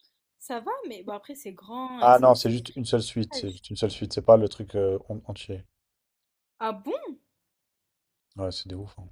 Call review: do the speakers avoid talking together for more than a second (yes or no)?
no